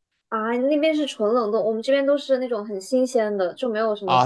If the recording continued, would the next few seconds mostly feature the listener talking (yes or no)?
yes